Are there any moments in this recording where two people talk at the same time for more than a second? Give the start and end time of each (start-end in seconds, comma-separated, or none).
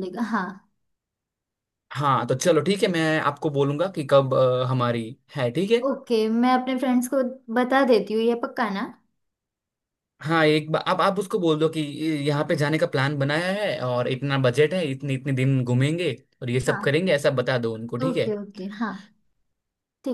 none